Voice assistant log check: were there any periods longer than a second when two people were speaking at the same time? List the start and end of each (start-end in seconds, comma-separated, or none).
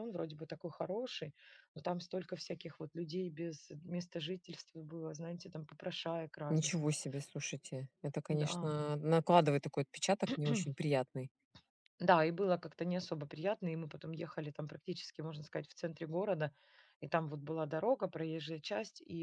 none